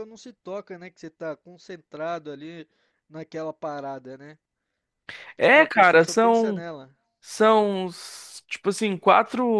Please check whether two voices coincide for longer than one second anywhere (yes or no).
yes